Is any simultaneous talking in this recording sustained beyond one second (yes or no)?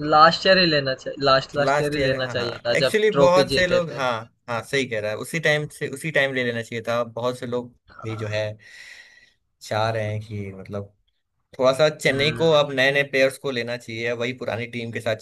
yes